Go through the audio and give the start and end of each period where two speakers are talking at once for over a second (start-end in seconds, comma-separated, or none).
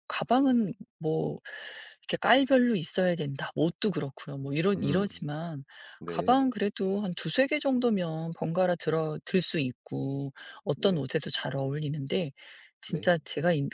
none